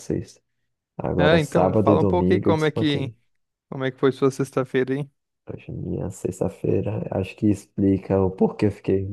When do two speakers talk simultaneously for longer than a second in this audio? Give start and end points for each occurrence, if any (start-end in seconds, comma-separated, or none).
1.2-3.1